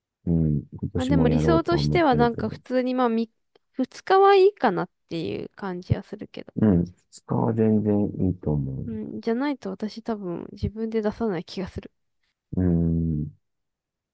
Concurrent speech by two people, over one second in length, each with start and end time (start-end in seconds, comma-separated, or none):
0.9-2.6